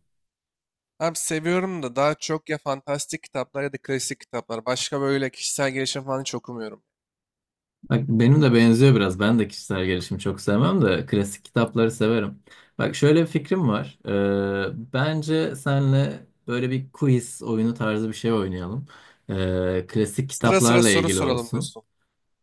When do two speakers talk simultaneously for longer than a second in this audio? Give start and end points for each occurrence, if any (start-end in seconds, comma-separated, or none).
20.3-21.7